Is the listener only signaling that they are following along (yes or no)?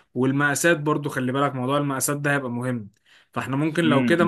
yes